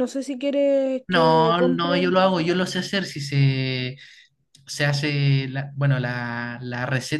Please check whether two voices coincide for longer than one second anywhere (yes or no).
yes